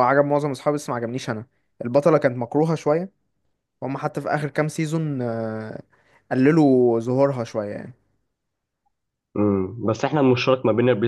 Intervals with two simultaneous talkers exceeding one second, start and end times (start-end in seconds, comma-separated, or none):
none